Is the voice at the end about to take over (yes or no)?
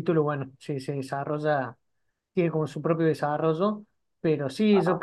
no